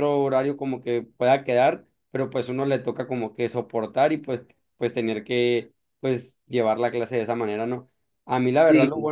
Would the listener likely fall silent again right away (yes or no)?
yes